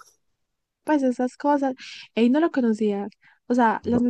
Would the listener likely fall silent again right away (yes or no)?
yes